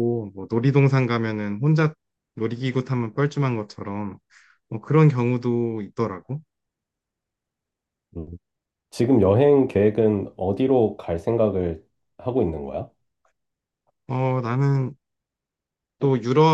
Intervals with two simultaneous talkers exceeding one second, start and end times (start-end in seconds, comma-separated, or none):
none